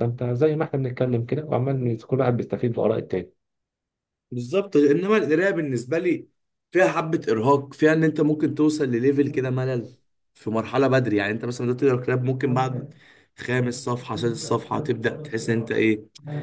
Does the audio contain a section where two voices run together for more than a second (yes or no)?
no